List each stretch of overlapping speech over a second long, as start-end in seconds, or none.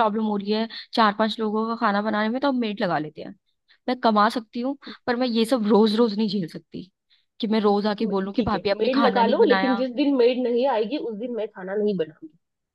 8.3-9.8